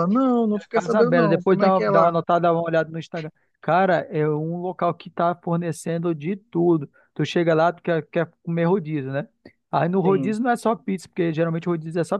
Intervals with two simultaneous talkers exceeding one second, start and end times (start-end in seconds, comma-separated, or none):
0.5-2.2